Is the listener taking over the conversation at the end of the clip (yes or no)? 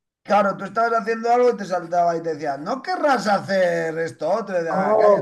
yes